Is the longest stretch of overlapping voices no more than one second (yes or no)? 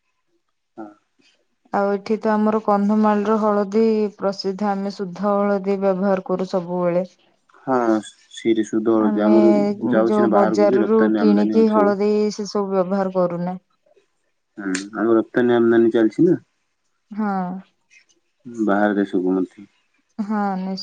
no